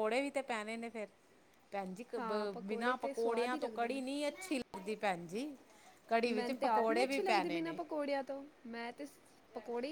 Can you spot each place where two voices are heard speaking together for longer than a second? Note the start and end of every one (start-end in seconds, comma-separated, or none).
2.2-4.0, 6.3-7.8